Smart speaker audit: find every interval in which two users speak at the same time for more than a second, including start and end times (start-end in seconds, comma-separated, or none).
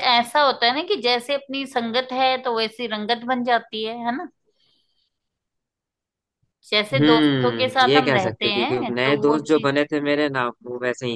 6.9-9.7